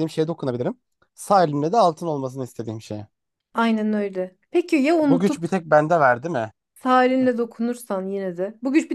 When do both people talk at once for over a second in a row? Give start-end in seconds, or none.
none